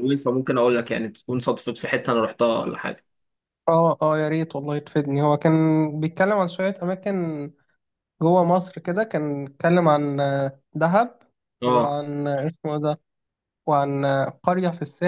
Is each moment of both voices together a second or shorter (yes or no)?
yes